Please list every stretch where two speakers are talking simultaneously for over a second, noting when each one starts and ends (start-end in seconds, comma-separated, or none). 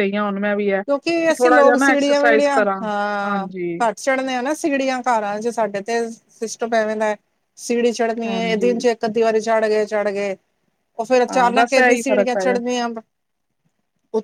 11.3-12.6